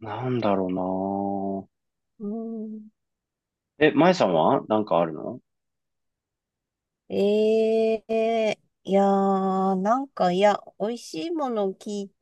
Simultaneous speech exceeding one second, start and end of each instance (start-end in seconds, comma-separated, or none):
none